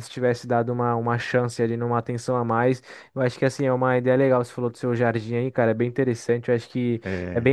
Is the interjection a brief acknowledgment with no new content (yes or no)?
yes